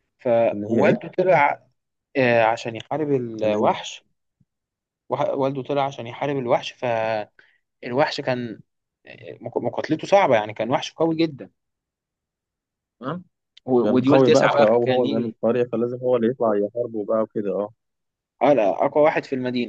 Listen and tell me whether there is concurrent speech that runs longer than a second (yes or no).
yes